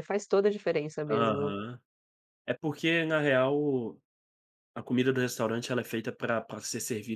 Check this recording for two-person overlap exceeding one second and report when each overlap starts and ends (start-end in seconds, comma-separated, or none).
none